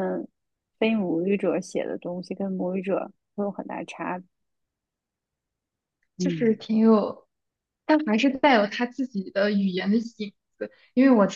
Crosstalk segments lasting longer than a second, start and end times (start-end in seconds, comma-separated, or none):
none